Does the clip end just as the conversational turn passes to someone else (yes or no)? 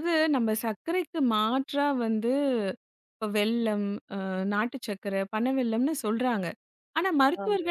no